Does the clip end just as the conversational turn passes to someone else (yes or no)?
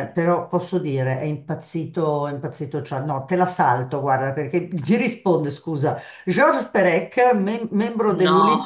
no